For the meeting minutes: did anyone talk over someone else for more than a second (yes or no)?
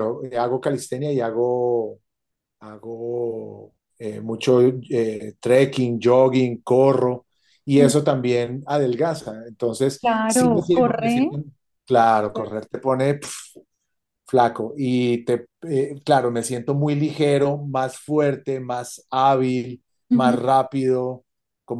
yes